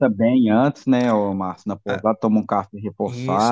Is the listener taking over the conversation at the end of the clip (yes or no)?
yes